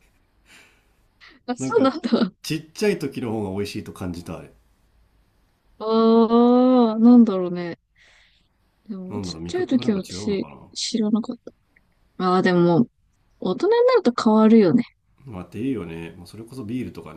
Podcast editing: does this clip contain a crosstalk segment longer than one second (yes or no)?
yes